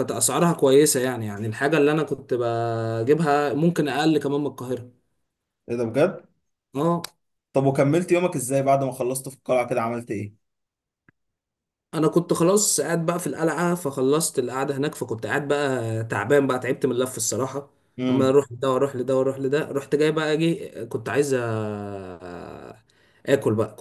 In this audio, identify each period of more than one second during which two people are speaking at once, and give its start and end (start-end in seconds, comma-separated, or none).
none